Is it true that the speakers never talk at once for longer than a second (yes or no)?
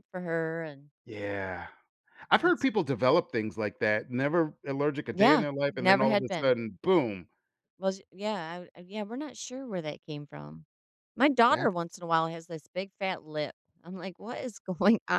no